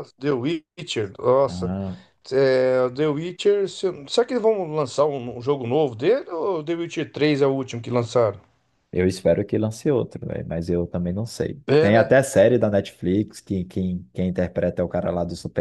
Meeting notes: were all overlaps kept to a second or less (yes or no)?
yes